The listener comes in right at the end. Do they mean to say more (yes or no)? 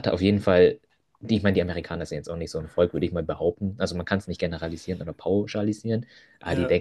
no